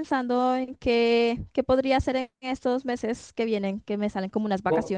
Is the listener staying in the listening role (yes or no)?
no